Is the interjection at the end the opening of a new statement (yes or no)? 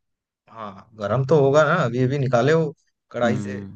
yes